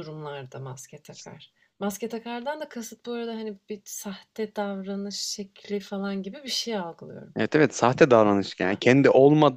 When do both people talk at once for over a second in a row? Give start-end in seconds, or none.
none